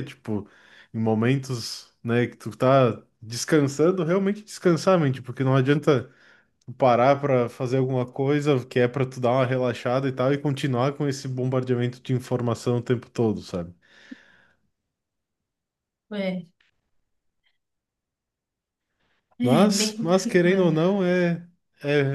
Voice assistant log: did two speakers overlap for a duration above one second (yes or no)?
yes